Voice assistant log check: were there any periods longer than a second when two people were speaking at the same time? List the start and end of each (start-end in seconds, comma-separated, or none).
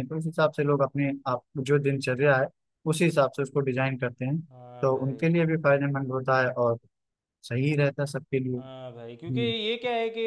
none